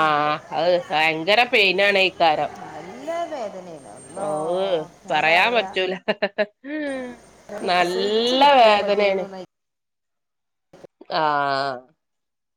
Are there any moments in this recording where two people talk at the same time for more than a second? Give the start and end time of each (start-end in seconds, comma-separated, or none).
7.7-9.2